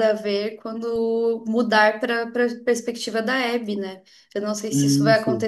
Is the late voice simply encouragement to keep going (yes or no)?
yes